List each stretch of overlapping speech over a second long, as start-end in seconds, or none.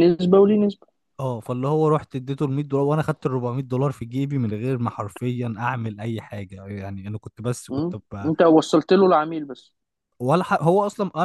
none